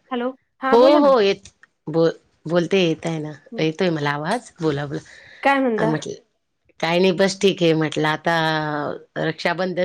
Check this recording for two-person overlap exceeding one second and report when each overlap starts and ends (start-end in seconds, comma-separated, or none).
none